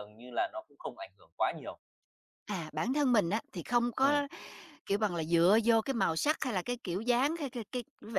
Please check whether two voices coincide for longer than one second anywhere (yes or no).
no